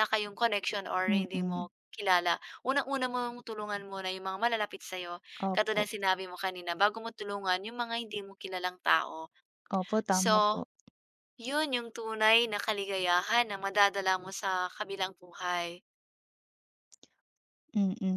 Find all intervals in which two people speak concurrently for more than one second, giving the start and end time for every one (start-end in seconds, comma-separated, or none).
none